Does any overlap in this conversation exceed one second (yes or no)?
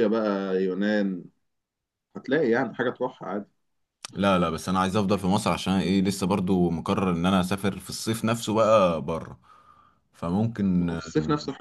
no